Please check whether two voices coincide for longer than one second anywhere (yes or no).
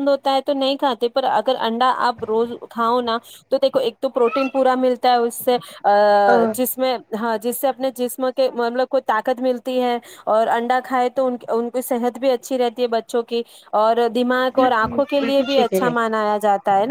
yes